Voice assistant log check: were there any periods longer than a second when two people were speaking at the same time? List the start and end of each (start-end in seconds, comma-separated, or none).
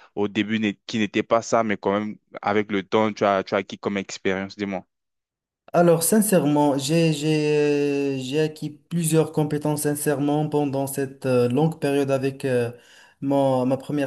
none